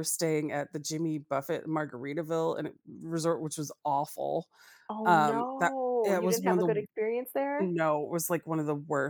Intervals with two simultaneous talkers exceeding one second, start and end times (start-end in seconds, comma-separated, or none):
5.0-6.7